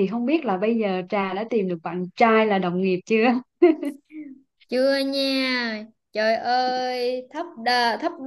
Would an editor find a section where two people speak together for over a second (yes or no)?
no